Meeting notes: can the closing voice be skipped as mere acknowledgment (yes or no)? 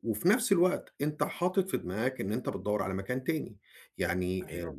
no